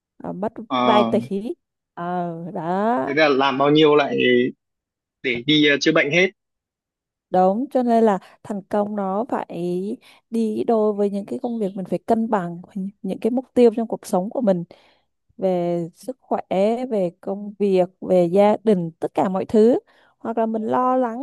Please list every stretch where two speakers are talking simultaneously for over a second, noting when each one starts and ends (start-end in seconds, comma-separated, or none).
none